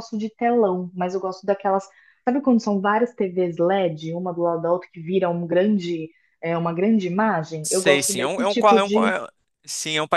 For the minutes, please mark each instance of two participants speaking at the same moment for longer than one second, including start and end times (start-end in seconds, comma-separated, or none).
7.6-9.1